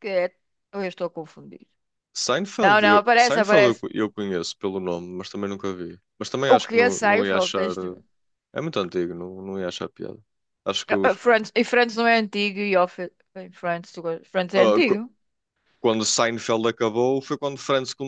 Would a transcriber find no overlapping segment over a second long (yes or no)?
no